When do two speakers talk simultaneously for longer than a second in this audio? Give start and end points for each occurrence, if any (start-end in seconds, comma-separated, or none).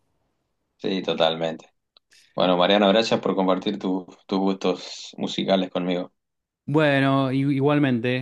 none